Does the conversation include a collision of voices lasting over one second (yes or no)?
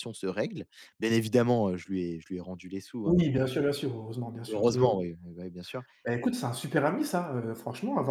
no